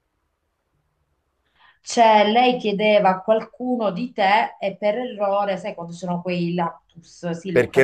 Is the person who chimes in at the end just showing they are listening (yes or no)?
no